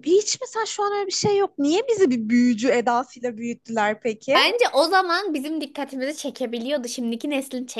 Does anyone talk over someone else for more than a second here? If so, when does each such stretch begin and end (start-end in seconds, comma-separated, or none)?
none